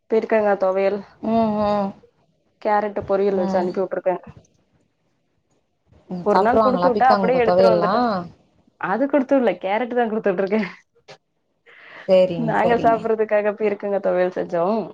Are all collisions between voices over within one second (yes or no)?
no